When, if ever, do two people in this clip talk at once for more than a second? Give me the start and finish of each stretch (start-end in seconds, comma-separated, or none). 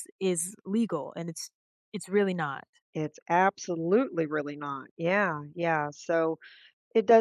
none